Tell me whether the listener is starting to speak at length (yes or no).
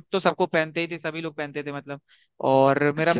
no